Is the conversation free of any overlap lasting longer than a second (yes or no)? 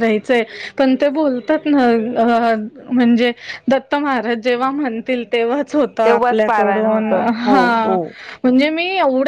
no